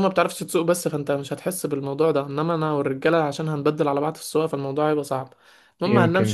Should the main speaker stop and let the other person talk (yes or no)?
no